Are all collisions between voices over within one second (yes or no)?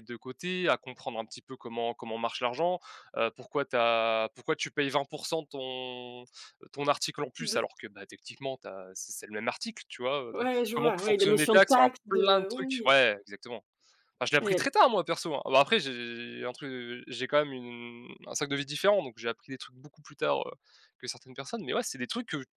no